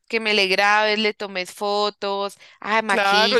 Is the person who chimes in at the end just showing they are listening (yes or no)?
no